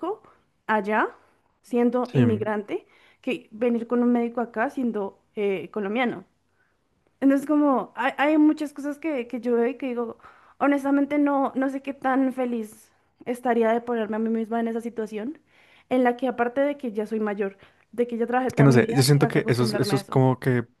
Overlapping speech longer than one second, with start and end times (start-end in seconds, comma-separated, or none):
18.5-20.2